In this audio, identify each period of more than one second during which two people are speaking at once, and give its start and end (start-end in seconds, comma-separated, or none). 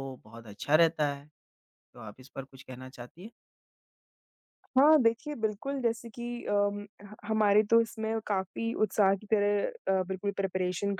none